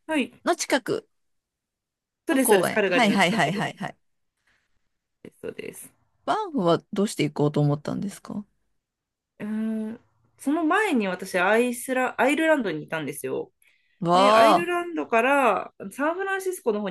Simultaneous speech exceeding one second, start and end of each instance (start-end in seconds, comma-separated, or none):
2.3-3.7